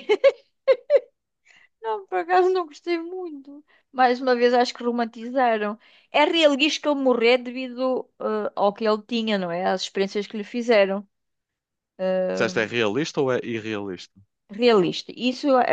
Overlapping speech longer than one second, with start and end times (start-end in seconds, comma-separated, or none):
none